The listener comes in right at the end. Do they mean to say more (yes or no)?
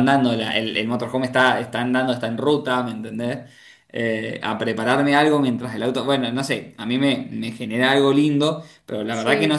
no